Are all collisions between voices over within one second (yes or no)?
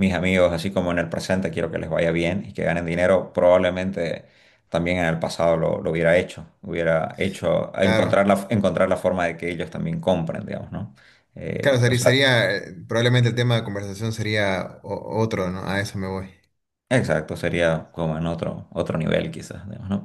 yes